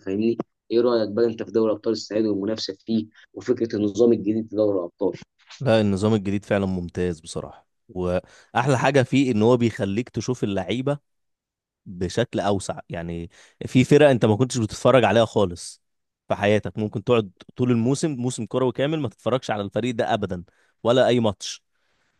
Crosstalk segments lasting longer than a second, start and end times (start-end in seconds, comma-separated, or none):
none